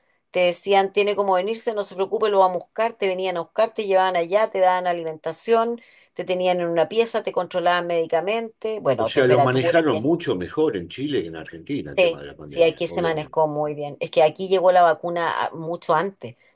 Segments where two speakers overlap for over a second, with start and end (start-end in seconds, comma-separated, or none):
9.0-10.2, 12.0-13.4